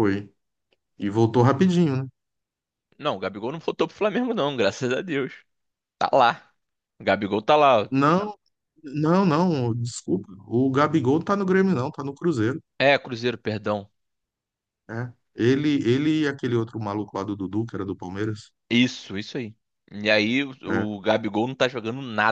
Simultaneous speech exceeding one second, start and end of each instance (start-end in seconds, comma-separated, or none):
none